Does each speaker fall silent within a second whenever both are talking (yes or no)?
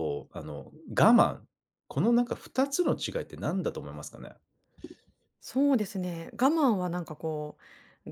yes